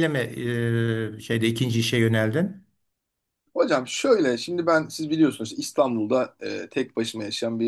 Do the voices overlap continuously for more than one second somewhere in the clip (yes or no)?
no